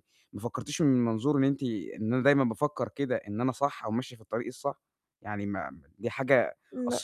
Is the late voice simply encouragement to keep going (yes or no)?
yes